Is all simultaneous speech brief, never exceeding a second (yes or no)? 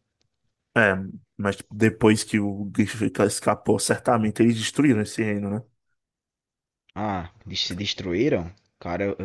yes